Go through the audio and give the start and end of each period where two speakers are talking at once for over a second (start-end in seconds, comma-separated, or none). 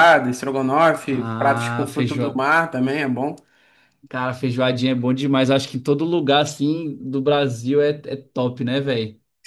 1.0-2.4